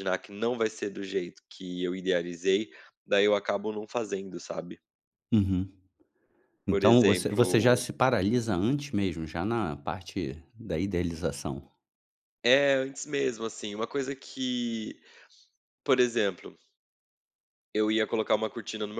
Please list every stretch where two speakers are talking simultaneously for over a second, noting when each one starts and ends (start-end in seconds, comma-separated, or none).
6.7-7.9